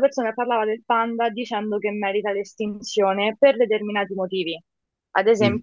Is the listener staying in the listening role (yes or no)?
yes